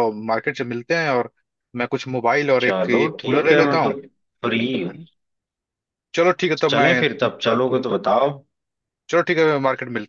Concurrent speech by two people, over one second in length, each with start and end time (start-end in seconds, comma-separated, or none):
2.6-3.9